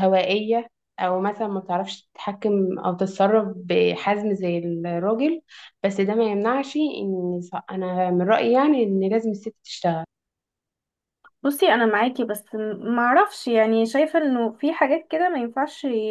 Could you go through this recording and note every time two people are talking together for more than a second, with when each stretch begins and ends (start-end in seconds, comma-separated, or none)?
none